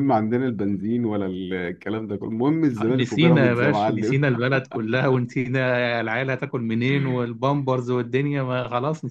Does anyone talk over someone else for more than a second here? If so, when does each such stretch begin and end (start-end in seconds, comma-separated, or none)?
2.9-4.3